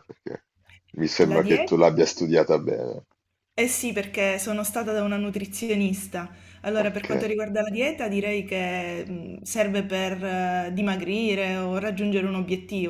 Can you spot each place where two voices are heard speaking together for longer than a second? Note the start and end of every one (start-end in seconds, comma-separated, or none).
none